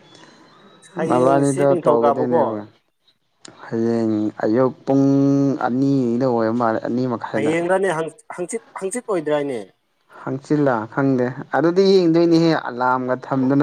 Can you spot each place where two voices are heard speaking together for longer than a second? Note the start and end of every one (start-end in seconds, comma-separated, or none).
1.1-2.4